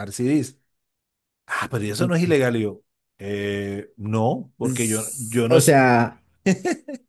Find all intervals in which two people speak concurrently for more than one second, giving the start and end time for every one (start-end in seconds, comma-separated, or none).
4.6-5.9